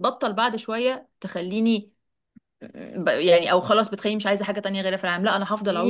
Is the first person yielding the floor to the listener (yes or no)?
yes